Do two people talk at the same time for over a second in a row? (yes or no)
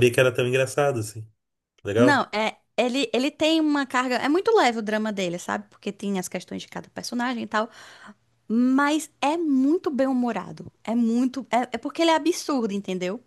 no